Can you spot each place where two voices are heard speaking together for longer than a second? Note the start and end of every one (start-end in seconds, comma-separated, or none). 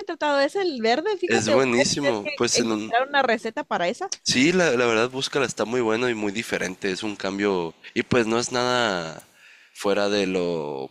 1.3-2.9